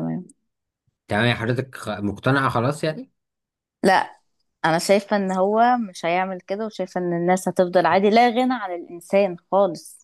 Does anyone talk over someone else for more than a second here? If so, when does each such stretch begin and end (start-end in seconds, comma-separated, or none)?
none